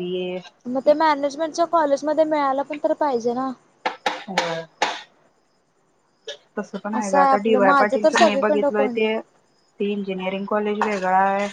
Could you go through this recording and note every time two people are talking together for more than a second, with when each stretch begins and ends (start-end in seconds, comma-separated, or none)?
7.0-9.0